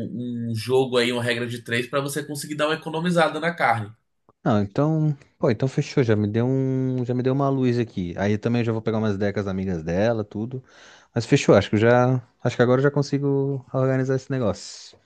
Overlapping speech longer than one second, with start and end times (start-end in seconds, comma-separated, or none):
none